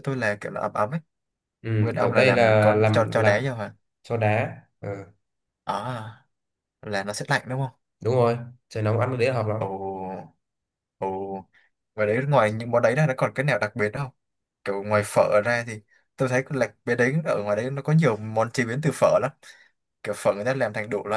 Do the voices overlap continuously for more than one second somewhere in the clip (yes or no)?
yes